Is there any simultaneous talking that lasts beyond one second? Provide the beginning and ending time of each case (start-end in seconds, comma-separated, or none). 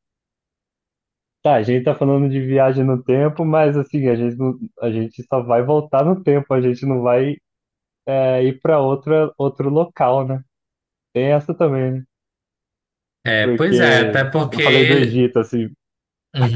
13.4-15.2